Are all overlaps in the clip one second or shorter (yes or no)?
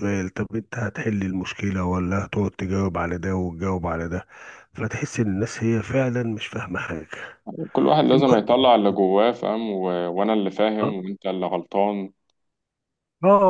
yes